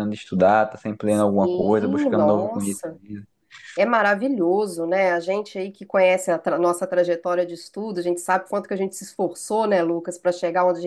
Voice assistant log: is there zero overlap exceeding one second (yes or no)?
no